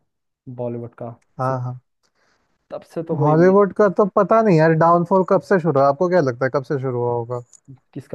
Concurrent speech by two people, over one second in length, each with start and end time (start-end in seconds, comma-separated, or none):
none